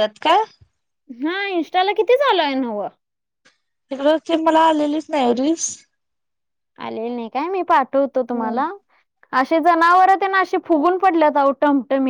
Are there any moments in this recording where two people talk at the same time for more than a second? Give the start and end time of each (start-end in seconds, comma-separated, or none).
none